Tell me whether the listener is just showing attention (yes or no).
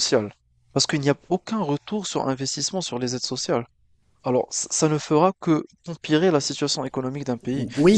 no